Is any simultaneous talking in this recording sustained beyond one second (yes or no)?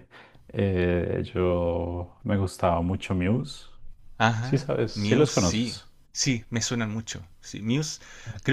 yes